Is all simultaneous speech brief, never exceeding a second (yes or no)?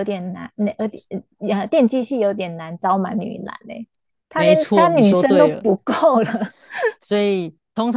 no